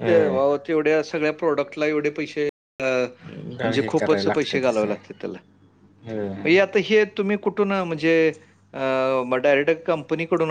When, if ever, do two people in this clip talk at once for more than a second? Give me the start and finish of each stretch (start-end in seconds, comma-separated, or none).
3.6-4.9